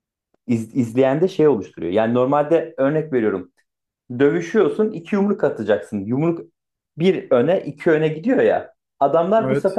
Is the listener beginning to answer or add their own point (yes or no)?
no